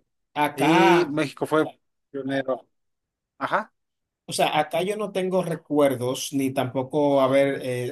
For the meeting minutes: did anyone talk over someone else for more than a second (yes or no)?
no